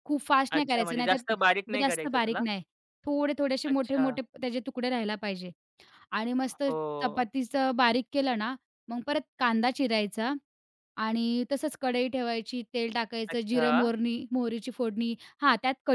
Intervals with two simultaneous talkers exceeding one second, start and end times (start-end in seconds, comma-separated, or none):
0.6-2.4